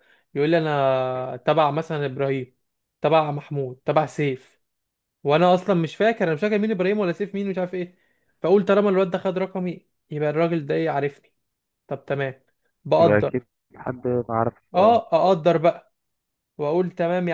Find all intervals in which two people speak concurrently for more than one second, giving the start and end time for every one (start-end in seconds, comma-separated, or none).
none